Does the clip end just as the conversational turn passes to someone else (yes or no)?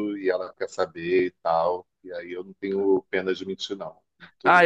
yes